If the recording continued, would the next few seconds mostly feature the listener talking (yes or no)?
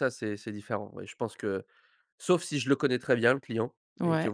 no